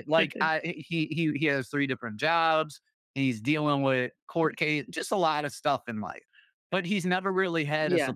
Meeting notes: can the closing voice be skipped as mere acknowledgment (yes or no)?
yes